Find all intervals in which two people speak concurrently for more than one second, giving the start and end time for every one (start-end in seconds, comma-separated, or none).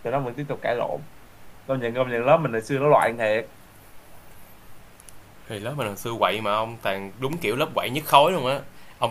none